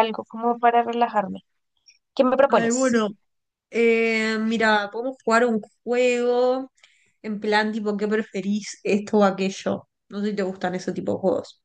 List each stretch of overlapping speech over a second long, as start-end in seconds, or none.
none